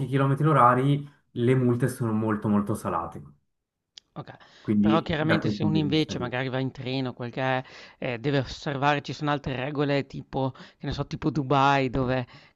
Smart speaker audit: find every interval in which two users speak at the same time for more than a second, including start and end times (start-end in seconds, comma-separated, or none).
4.8-6.3